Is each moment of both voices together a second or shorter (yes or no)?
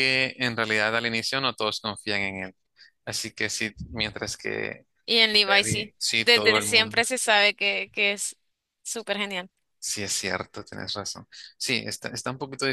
no